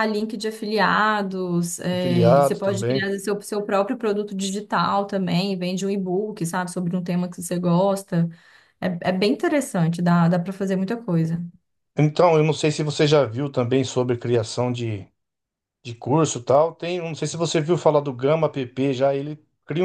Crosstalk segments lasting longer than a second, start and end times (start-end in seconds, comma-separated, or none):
1.9-3.1